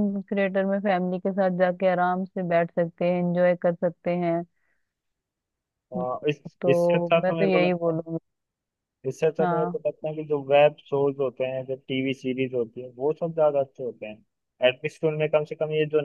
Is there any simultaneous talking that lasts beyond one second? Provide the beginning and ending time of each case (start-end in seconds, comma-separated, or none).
6.6-8.0